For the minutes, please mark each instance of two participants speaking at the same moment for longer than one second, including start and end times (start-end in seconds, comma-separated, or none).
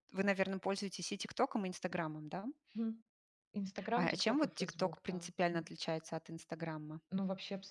4.0-5.7